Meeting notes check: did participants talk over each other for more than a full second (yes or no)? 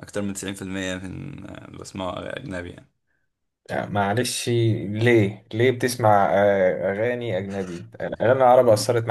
no